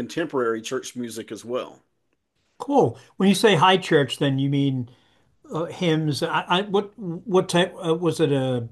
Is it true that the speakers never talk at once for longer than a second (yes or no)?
yes